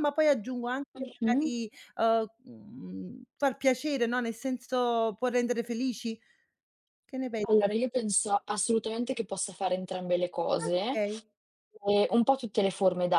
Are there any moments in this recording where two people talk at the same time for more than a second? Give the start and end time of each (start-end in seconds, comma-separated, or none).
none